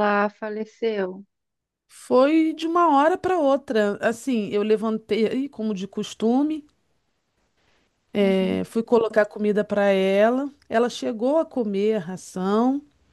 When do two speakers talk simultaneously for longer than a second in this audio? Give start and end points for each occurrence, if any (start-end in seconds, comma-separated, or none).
none